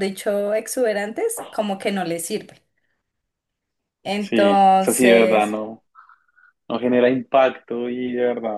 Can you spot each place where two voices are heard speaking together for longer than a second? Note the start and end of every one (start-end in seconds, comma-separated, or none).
4.2-5.5